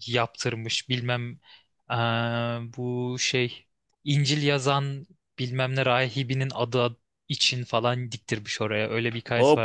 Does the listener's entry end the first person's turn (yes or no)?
yes